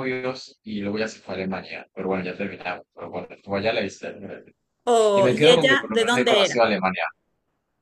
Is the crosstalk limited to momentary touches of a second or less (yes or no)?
no